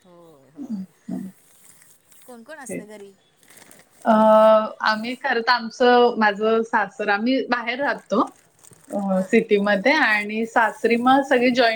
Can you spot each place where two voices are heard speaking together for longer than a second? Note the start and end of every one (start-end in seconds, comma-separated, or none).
none